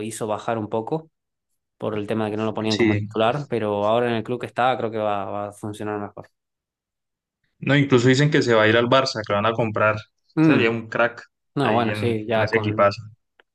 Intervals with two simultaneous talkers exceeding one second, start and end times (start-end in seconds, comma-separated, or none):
11.6-12.9